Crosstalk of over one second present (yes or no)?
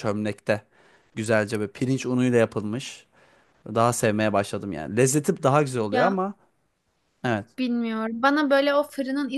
no